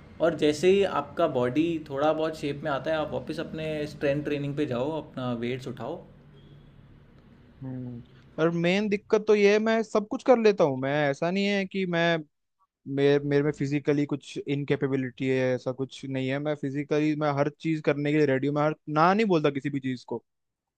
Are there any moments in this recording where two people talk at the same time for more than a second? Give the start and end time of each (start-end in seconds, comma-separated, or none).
none